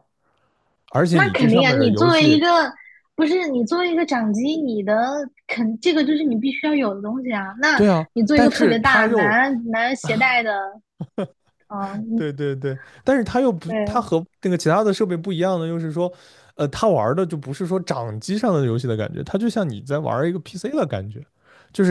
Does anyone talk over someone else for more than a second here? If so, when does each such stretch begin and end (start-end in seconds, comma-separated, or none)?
1.1-2.4, 7.7-9.4